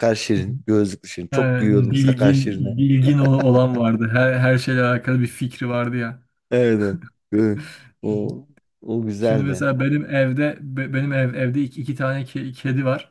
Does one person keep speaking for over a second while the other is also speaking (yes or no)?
yes